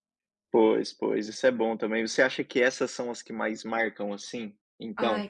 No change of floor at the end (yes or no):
no